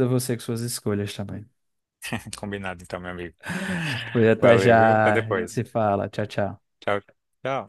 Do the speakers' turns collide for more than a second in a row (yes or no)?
yes